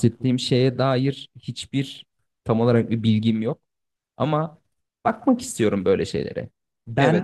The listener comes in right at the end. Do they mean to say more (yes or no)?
no